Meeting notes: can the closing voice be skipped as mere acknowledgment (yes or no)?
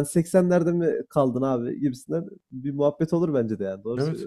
no